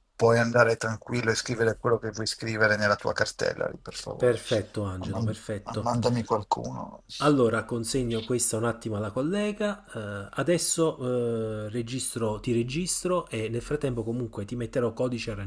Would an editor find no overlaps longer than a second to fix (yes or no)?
yes